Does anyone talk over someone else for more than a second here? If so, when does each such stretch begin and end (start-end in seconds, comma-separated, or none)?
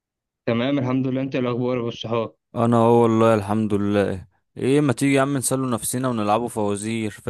none